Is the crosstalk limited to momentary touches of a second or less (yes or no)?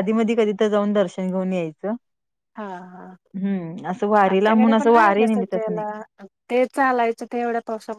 no